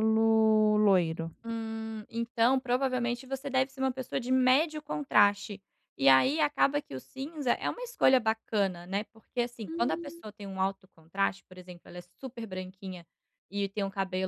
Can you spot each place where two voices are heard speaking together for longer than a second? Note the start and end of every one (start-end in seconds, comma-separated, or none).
none